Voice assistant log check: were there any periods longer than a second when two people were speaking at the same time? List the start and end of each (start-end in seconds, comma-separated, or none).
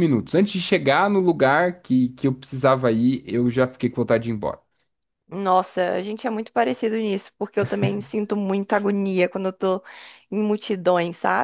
none